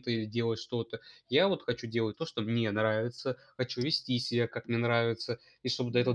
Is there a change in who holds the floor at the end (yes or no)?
no